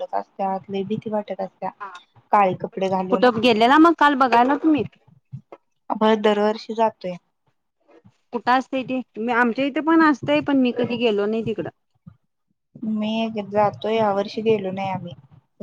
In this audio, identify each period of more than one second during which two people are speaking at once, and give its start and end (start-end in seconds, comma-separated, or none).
none